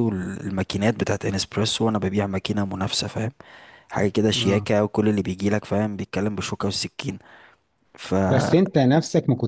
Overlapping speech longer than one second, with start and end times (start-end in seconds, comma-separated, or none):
none